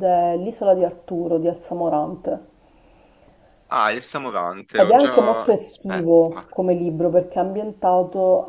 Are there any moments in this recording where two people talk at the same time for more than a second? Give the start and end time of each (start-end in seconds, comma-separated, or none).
4.7-6.4